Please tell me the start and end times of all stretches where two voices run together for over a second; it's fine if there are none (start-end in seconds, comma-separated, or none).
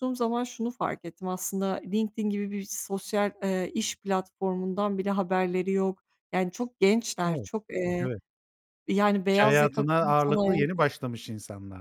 9.3-10.7